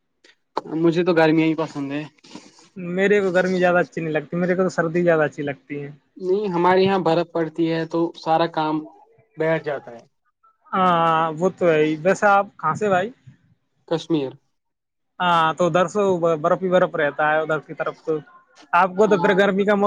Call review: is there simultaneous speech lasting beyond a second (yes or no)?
no